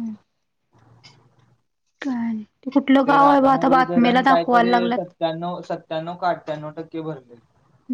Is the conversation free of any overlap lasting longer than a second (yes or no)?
no